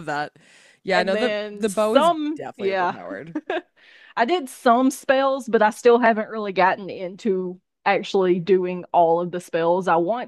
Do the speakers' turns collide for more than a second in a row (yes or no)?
yes